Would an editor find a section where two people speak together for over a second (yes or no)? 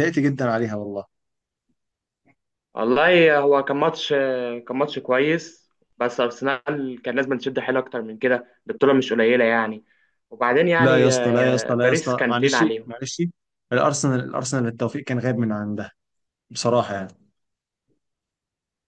yes